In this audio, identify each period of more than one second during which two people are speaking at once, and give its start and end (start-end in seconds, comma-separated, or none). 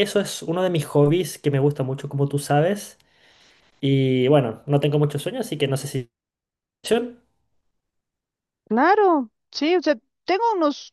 none